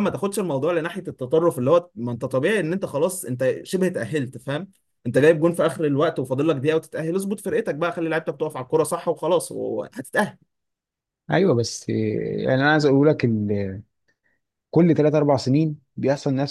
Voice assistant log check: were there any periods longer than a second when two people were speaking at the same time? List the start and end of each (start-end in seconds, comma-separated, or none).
none